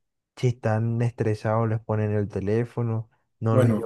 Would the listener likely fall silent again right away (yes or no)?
yes